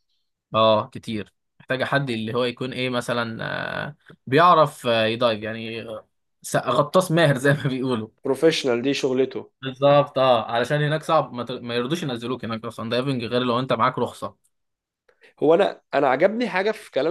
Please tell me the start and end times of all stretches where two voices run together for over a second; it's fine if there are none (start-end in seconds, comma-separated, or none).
none